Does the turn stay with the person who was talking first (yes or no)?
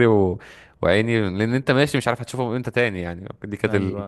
no